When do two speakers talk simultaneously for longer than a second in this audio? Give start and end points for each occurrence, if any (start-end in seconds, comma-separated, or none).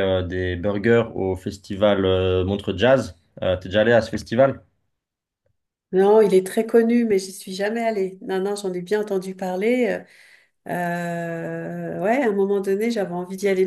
none